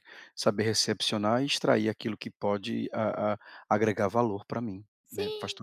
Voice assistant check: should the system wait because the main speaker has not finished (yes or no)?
no